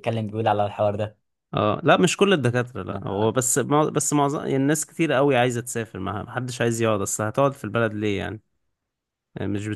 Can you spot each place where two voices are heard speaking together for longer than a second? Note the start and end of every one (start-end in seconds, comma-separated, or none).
none